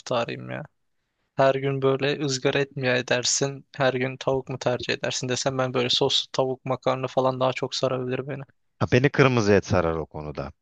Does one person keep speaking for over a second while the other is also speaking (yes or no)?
no